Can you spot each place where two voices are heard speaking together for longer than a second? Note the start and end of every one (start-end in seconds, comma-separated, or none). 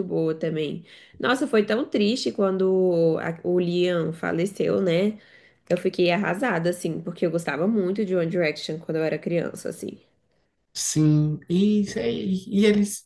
none